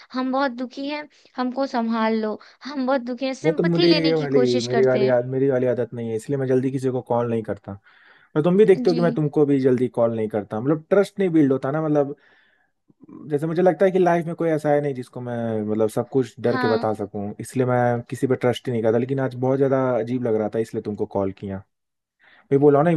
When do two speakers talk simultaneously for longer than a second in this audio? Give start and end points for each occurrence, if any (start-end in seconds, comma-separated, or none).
3.4-5.2